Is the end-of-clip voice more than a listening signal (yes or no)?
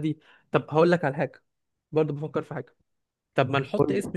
no